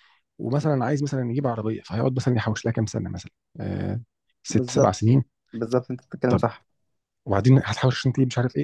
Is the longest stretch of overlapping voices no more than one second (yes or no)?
yes